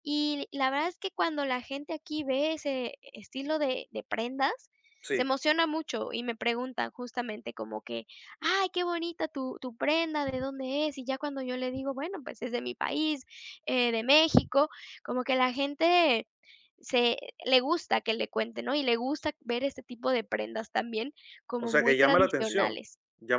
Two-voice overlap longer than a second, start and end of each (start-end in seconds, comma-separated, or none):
21.6-22.8